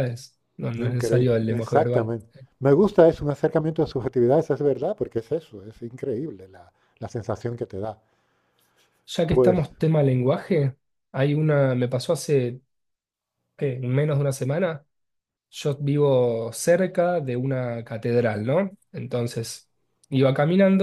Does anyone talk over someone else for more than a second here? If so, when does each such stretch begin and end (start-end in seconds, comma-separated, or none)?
0.8-2.1